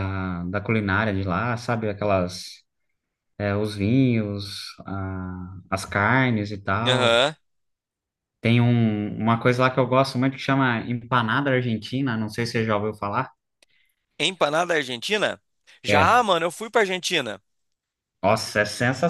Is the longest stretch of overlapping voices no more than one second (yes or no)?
yes